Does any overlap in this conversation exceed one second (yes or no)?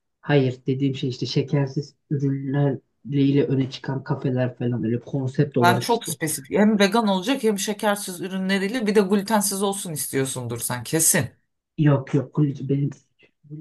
no